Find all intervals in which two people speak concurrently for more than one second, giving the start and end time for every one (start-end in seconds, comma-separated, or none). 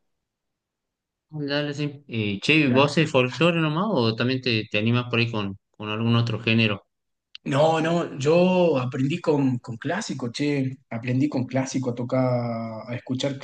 none